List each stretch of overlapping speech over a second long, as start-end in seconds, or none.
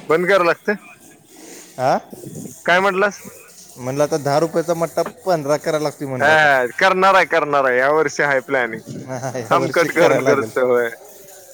9.2-10.5